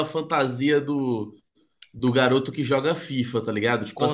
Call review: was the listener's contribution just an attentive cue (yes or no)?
yes